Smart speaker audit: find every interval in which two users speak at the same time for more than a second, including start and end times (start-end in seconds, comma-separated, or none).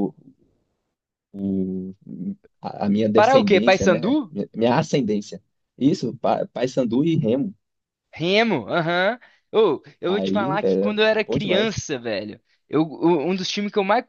3.1-4.3, 10.1-11.8